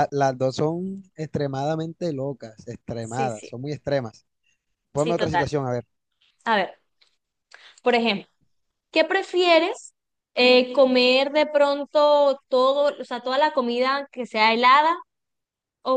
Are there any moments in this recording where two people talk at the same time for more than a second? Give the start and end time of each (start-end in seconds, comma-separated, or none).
none